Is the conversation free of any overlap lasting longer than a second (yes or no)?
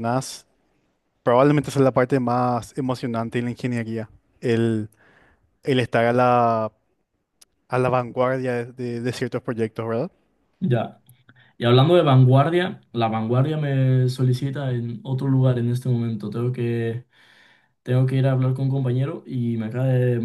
yes